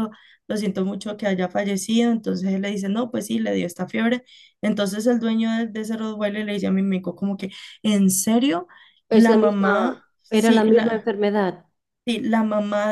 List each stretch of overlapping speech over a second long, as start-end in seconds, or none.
9.1-11.1